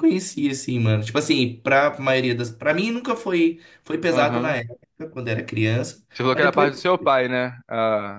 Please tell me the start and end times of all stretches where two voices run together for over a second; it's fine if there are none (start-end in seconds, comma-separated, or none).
none